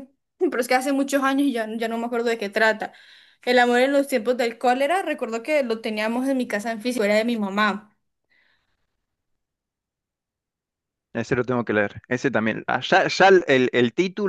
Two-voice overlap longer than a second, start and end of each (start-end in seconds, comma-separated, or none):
none